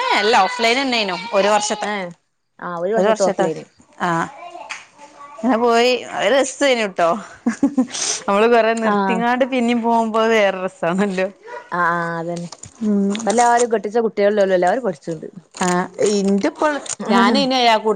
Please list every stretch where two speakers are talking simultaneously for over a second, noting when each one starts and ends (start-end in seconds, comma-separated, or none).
none